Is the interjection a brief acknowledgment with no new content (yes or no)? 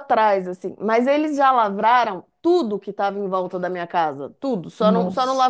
yes